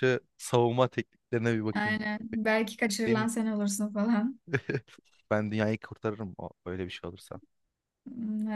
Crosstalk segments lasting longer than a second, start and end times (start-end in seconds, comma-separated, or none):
none